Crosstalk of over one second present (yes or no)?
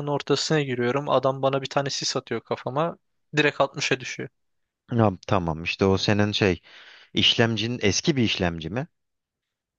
no